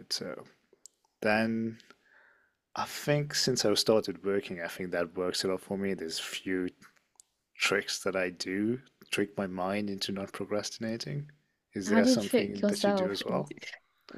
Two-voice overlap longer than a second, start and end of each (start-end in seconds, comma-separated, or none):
11.9-13.5